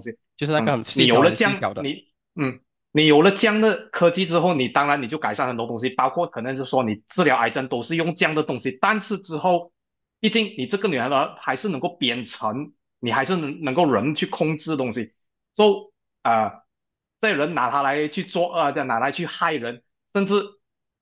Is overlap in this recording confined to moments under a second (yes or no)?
no